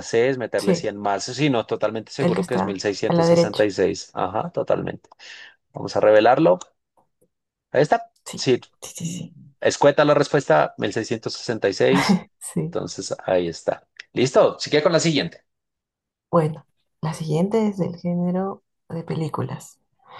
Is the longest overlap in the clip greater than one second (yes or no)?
yes